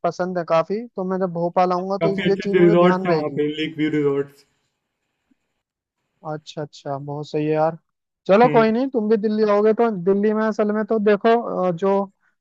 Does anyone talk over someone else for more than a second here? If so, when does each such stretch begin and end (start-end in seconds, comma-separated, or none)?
2.0-3.4